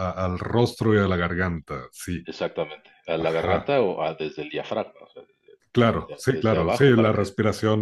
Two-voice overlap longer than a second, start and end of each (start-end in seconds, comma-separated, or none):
5.9-7.3